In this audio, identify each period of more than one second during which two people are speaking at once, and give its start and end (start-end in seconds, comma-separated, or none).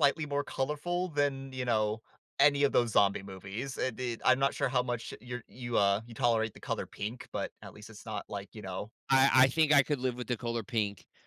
none